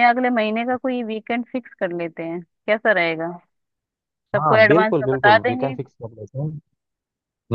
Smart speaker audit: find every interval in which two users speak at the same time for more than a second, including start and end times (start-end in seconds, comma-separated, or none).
4.4-5.8